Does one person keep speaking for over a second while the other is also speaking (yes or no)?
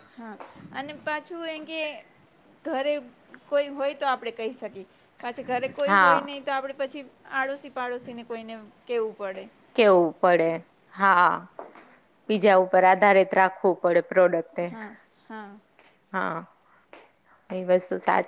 no